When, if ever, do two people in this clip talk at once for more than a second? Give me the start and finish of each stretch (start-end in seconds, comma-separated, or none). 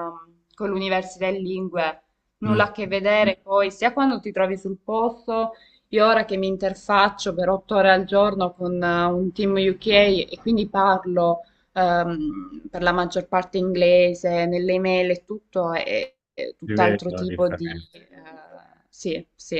16.6-18.0